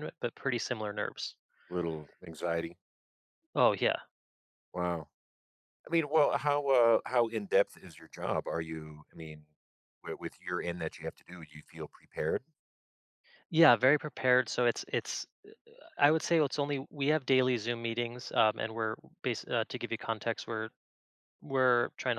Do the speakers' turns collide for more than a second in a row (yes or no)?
no